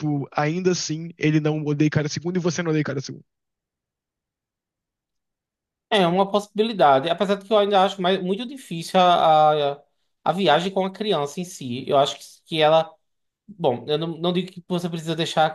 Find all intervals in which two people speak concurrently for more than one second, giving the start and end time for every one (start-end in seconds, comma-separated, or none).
none